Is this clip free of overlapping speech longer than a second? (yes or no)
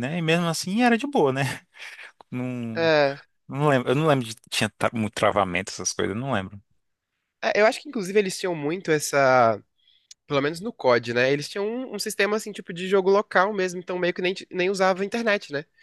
yes